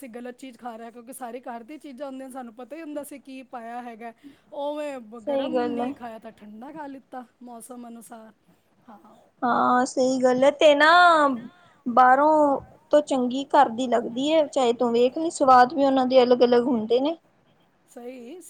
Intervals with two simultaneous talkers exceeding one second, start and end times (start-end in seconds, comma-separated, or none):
none